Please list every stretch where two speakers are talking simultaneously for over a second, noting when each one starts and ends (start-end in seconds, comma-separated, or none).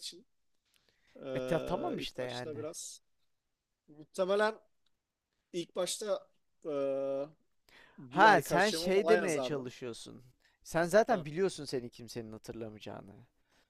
1.3-2.7, 8.1-9.7